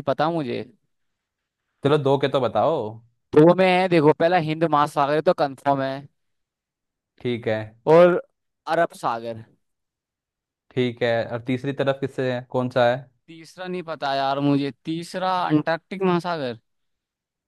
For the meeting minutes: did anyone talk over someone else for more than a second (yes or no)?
no